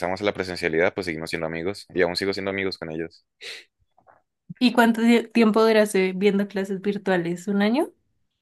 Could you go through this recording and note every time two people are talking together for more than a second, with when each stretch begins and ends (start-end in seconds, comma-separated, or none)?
none